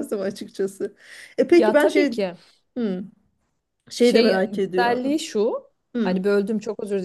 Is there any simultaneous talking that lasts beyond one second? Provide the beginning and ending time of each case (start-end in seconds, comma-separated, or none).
4.0-5.2